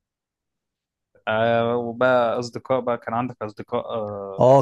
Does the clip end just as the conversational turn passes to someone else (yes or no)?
yes